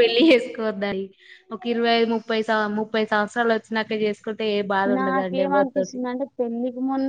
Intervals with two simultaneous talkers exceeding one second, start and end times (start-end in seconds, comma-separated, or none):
none